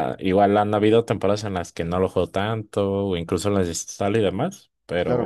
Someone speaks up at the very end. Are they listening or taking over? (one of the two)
taking over